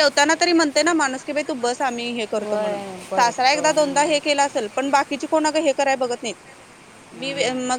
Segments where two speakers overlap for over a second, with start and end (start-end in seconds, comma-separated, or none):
2.4-4.2